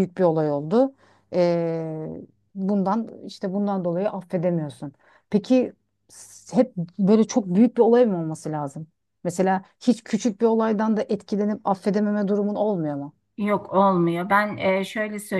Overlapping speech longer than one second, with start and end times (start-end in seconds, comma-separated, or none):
none